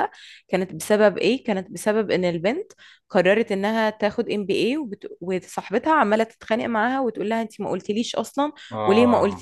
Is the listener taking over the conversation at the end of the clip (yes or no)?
no